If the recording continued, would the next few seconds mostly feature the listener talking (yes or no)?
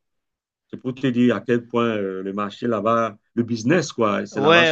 yes